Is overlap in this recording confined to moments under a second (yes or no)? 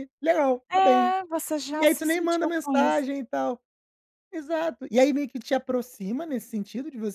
no